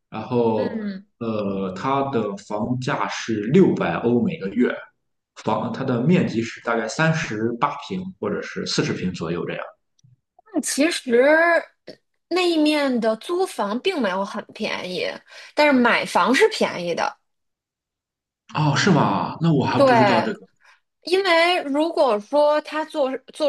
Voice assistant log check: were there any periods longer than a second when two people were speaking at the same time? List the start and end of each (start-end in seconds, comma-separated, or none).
none